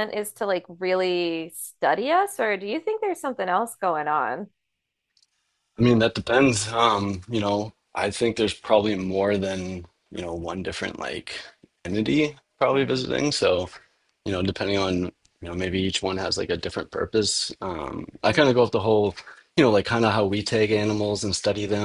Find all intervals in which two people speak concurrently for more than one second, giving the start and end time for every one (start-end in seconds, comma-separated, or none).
none